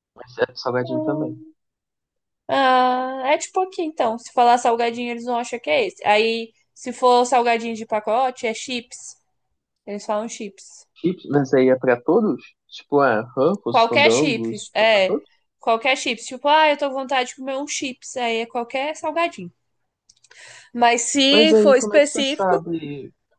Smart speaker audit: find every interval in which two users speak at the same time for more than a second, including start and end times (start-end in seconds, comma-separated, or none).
13.7-15.2, 21.3-22.6